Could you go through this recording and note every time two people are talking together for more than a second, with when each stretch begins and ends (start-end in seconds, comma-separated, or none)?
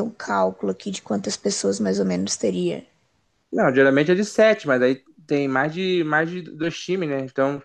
none